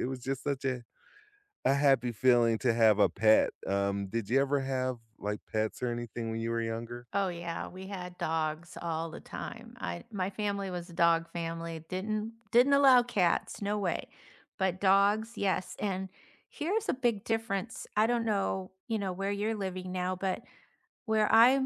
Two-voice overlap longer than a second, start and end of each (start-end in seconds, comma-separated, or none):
none